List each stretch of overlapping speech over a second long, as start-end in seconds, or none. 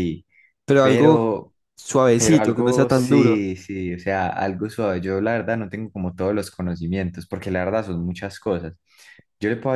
2.1-3.5